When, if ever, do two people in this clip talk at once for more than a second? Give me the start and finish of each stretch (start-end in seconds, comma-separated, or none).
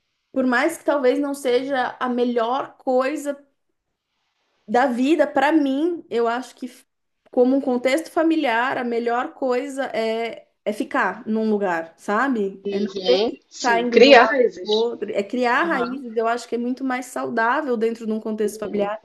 12.6-14.9